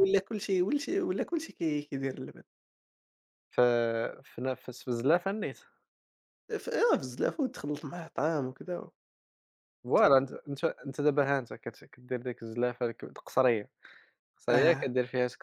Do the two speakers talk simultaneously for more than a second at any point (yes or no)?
no